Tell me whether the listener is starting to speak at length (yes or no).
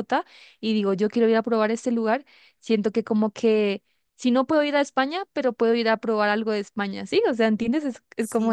yes